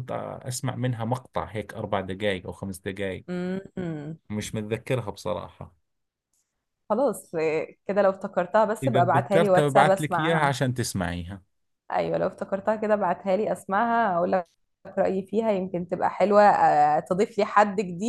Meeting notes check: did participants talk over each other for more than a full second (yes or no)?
yes